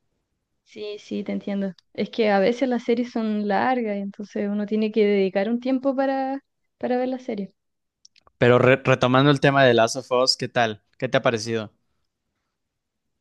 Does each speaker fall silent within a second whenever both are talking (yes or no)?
yes